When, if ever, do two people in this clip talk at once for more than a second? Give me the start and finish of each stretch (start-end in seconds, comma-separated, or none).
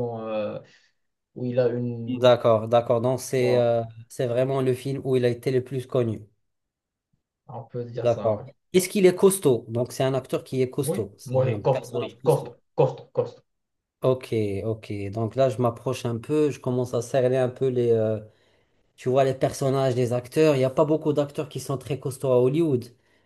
10.9-12.5